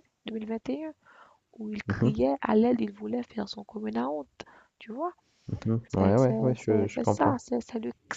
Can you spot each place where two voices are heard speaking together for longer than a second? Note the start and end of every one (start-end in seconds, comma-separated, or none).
5.9-7.4